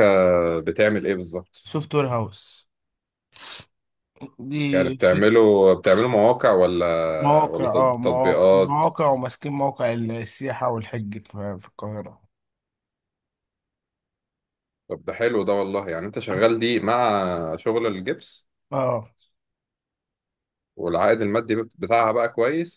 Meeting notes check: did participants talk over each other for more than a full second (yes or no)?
yes